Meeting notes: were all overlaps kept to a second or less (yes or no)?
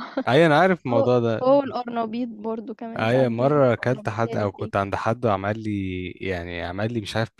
no